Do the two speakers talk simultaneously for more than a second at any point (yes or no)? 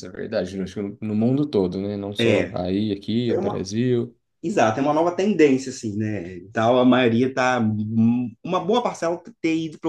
no